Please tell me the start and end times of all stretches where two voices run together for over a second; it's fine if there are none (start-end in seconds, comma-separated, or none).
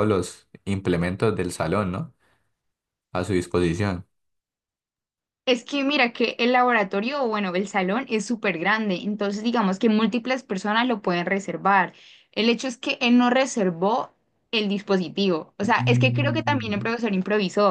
15.6-16.9